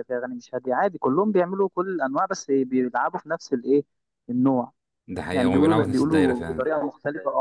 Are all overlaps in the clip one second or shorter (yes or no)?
no